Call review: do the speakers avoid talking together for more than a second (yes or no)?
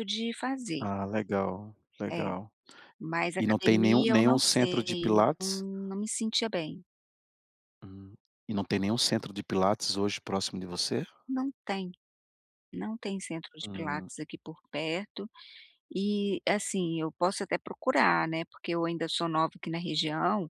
no